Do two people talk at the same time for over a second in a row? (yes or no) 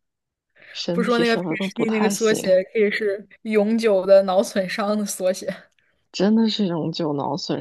yes